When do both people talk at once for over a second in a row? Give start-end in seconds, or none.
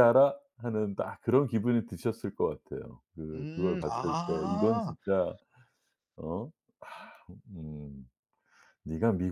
3.3-4.9